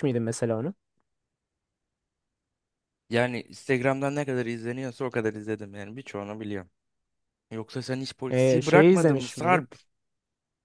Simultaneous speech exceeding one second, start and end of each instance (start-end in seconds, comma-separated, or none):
8.3-9.6